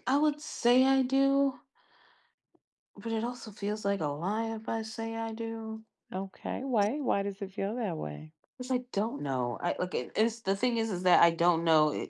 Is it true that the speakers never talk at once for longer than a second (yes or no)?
yes